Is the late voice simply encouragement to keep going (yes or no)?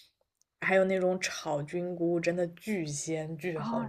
no